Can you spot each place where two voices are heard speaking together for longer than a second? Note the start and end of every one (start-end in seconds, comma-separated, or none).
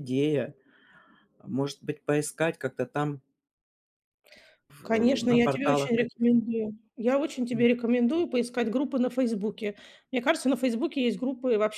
4.8-6.3